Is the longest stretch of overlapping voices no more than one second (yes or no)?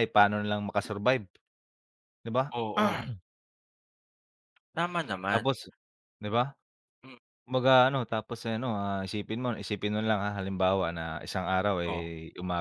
yes